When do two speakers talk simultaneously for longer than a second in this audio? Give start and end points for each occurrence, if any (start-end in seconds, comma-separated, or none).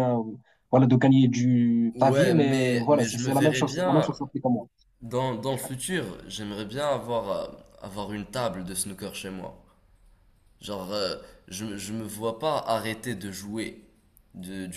1.9-4.1